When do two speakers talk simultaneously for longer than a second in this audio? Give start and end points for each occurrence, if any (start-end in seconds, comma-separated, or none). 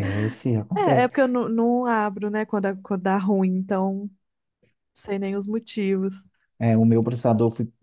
none